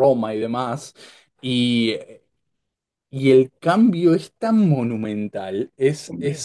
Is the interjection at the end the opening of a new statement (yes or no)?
no